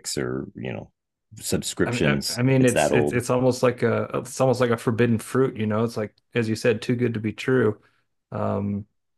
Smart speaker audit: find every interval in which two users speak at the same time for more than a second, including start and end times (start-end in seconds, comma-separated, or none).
1.8-3.2